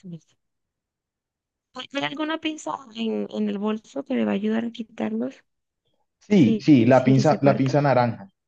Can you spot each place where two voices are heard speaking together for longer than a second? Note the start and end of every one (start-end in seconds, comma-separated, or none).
6.3-7.8